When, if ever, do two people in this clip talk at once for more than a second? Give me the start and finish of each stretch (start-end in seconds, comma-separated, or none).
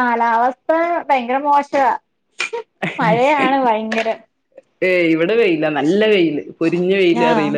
none